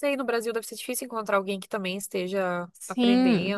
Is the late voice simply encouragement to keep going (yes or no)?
no